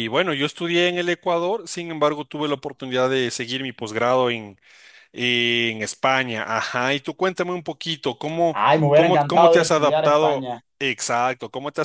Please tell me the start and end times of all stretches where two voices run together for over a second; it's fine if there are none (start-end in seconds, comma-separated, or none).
8.5-10.6